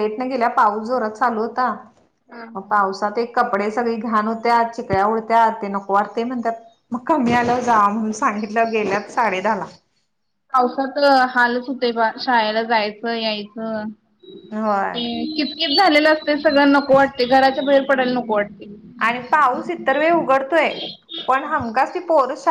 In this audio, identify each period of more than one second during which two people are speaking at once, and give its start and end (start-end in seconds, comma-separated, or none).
none